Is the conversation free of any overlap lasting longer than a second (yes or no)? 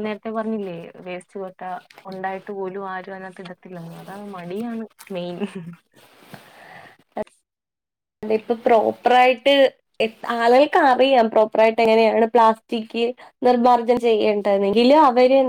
yes